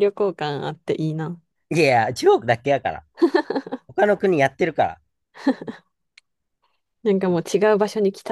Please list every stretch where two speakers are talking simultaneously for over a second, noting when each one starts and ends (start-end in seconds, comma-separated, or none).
none